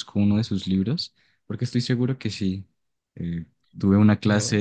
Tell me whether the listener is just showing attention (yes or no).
yes